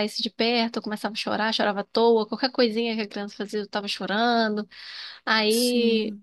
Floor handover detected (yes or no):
no